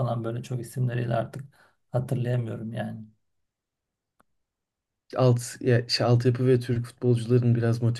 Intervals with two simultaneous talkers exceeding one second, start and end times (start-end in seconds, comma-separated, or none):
none